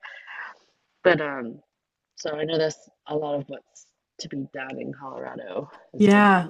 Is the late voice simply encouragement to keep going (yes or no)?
no